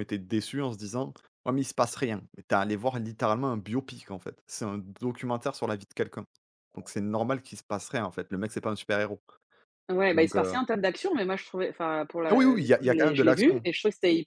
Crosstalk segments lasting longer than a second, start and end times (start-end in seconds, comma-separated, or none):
12.3-13.7